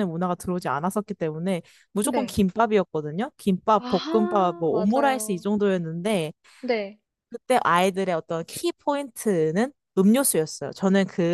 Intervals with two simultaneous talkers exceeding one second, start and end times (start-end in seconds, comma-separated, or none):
3.8-5.4